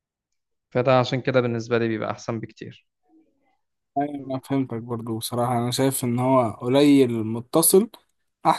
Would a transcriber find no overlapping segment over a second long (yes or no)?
yes